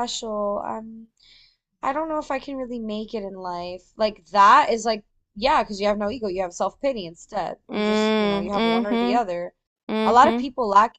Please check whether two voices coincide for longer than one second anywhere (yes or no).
yes